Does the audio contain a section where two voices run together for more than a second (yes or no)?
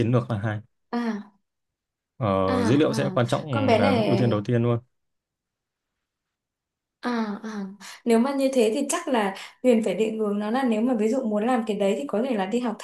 yes